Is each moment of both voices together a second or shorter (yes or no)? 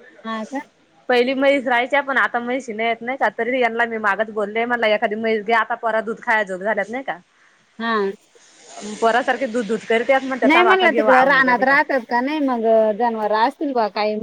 no